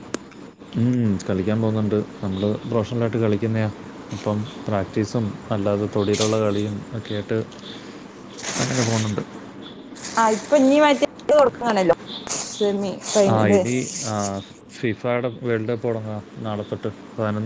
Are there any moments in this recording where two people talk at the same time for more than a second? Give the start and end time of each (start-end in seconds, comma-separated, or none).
none